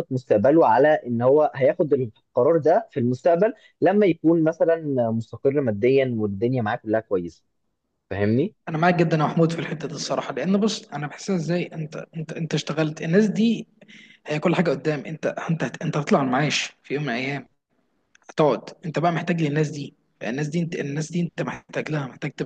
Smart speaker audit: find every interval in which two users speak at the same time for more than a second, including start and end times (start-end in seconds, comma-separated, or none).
none